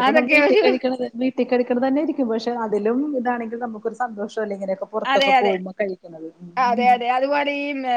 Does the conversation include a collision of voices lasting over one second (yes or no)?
no